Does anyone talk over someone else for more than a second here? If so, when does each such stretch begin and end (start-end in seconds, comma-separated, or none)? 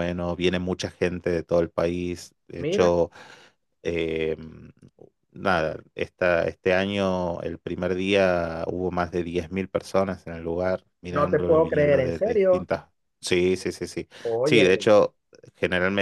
11.1-12.7